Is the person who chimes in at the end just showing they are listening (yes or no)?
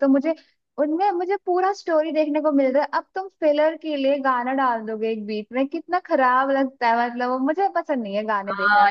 no